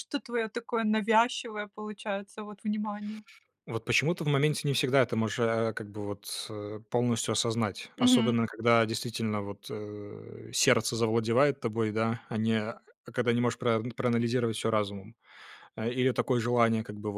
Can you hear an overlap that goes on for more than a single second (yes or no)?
no